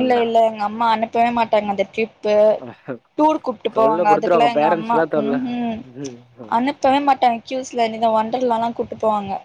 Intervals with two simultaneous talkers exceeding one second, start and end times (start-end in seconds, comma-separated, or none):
3.8-5.4